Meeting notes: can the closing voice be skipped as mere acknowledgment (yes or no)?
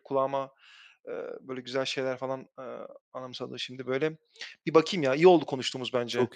no